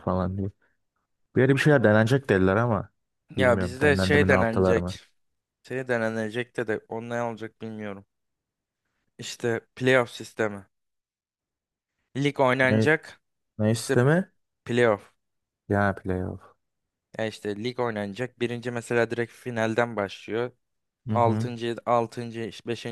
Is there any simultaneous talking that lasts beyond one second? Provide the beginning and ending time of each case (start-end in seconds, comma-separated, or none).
3.4-5.0